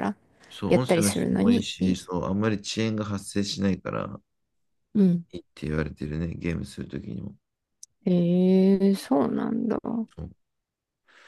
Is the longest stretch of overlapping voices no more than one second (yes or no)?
no